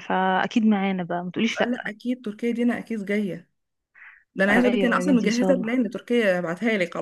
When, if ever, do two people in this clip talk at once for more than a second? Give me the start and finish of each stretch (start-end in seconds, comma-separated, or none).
4.5-5.7